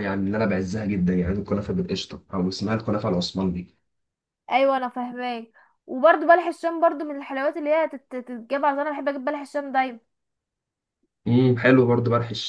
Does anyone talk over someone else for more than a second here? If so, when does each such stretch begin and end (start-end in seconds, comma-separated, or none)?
none